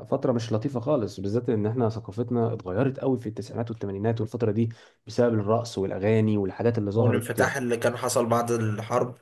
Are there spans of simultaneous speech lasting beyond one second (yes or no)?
no